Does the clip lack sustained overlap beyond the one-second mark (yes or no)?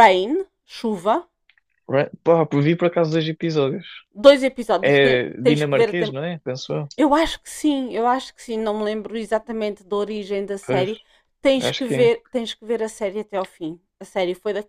no